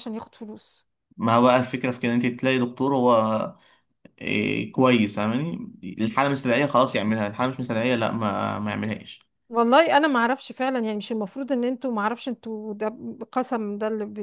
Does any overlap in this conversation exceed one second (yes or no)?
no